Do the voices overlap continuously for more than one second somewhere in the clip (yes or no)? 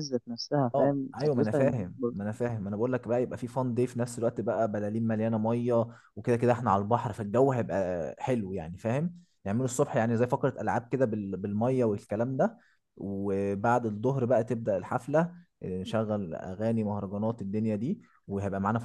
yes